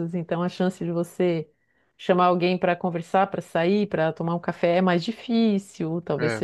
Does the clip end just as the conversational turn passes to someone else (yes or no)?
no